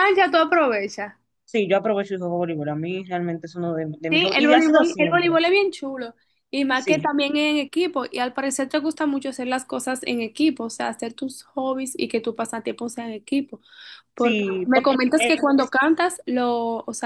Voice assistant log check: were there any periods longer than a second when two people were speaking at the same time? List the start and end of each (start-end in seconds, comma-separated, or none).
4.1-5.4, 14.2-15.7